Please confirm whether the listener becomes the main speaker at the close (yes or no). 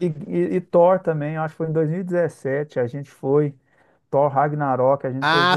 yes